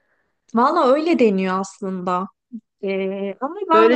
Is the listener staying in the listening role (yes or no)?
no